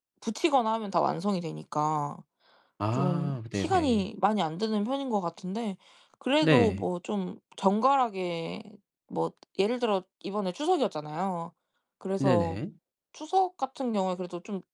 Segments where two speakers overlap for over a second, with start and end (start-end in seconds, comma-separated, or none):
2.9-4.1